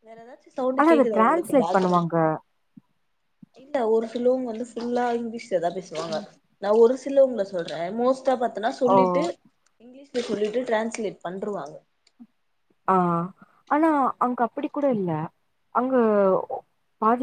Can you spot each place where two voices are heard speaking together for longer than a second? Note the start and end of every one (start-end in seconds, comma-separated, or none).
0.8-2.1